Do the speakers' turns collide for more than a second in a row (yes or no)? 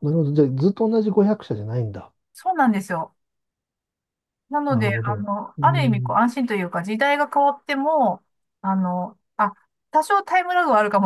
yes